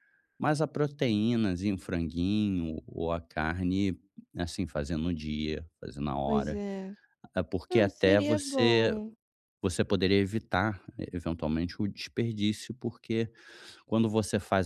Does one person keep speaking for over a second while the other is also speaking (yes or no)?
yes